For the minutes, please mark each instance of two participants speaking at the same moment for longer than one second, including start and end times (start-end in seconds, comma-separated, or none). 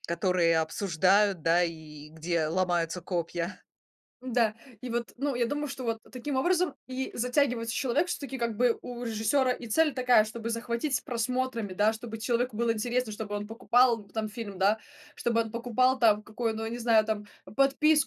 none